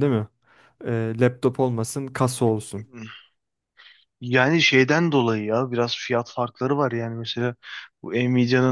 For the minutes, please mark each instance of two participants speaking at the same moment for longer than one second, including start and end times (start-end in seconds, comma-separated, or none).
none